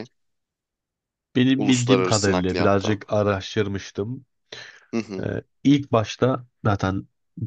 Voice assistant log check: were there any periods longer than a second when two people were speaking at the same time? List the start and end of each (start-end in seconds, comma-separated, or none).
1.5-3.0